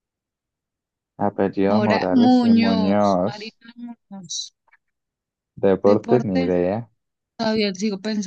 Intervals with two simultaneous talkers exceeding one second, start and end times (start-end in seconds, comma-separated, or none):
1.7-3.6